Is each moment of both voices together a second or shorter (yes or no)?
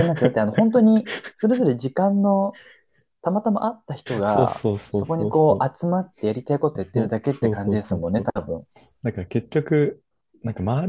no